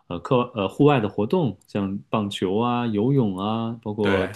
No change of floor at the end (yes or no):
yes